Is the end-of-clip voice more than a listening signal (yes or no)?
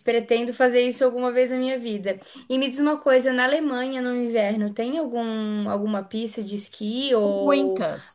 yes